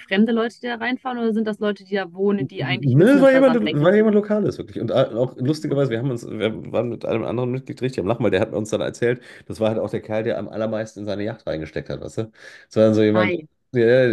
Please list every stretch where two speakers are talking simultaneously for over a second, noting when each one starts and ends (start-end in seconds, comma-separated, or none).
2.6-3.9